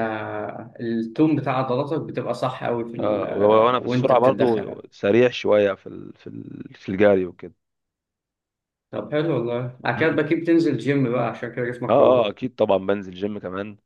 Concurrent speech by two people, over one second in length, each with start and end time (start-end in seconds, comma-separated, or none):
3.0-4.8